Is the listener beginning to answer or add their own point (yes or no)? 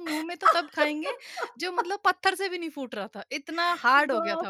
yes